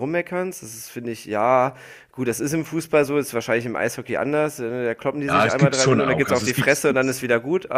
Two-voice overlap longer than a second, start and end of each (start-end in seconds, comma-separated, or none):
5.3-7.2